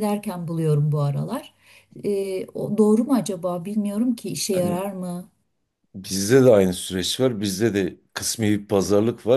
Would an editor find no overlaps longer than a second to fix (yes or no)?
yes